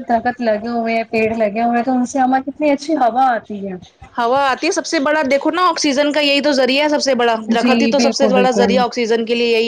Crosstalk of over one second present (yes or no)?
yes